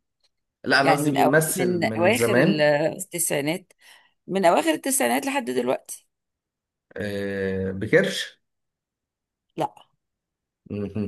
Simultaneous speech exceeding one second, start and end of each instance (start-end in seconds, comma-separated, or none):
0.8-2.7